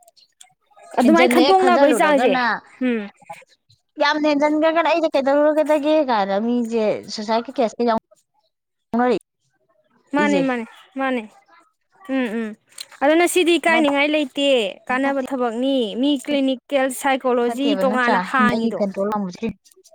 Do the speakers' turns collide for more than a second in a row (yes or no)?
yes